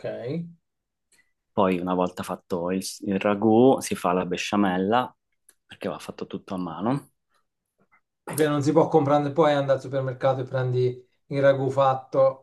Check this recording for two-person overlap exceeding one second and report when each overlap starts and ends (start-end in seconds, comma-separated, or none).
none